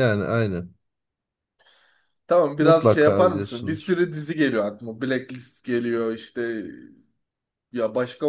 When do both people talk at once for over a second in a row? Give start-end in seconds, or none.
2.6-4.0